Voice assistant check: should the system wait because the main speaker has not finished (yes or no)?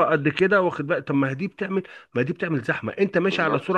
yes